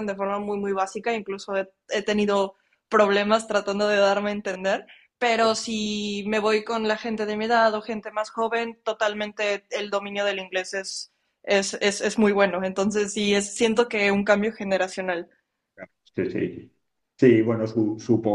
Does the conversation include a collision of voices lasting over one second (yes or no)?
no